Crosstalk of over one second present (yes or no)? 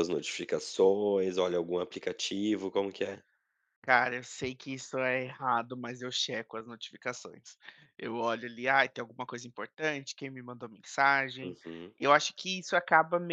no